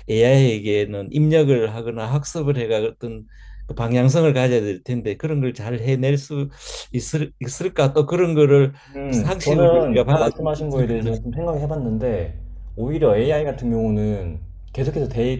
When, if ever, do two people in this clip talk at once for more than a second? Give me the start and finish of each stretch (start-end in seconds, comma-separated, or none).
9.1-11.1